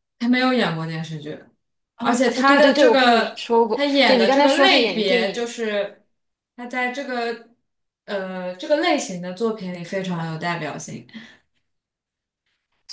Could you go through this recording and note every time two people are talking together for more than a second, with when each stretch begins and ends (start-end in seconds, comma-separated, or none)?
2.0-5.5